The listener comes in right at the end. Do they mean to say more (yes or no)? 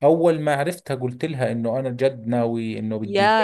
yes